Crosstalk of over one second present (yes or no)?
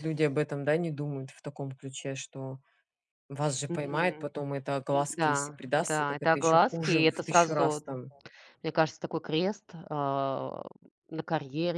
yes